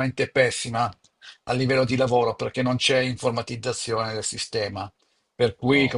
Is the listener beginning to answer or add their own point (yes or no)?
no